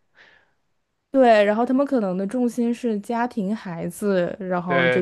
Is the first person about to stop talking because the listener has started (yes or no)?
yes